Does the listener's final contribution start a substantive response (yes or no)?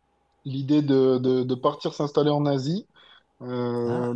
no